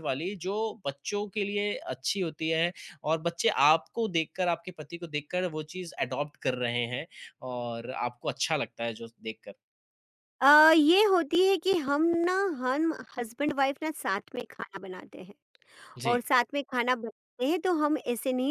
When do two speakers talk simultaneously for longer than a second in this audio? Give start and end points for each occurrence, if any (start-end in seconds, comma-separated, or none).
none